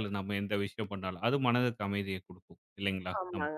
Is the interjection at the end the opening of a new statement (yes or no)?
yes